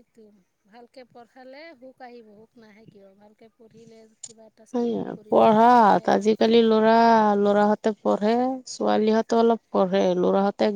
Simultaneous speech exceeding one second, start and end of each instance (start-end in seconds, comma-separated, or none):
4.7-6.7